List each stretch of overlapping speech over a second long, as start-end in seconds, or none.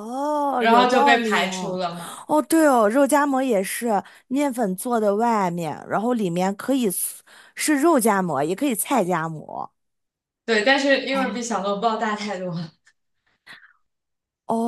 0.6-1.8